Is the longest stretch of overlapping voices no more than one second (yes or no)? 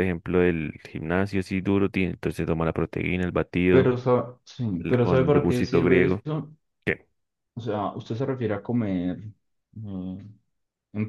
no